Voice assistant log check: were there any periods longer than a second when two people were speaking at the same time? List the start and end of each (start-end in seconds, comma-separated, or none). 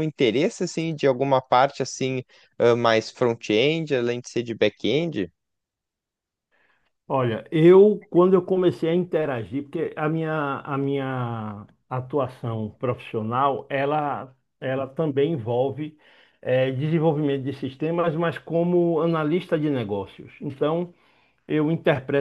none